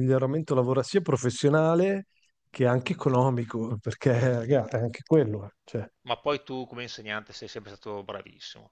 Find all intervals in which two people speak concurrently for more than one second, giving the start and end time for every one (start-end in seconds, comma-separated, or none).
none